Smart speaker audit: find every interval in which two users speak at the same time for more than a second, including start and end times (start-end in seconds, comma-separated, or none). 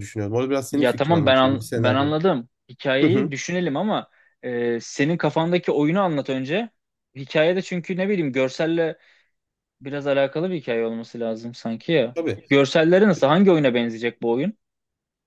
0.7-2.1